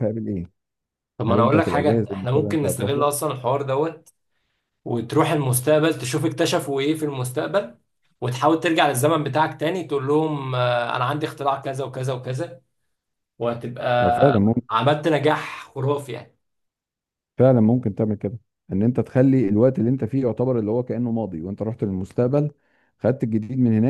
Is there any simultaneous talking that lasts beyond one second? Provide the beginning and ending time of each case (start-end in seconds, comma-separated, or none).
1.3-3.1